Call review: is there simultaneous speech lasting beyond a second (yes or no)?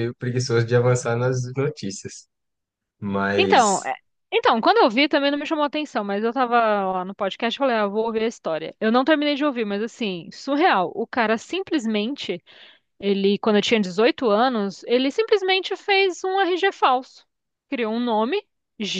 no